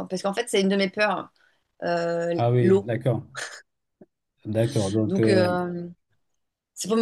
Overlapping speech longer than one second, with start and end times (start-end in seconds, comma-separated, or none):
none